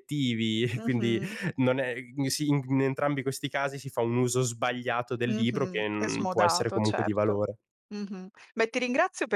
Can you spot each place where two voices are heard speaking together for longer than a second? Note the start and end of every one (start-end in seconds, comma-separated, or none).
5.3-7.4